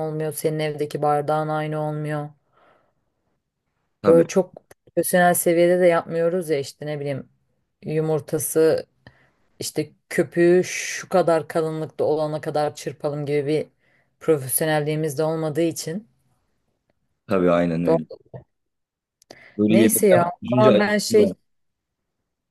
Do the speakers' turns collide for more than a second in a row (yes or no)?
yes